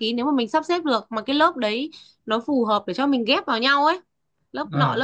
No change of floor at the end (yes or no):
yes